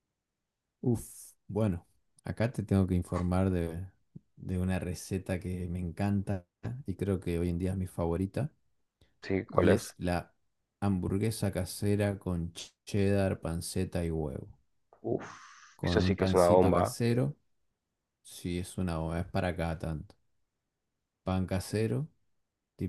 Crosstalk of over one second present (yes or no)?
yes